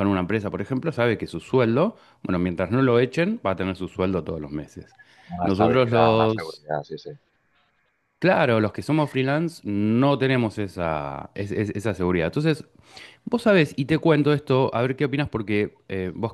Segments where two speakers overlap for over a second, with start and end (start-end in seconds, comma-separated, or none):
5.4-6.7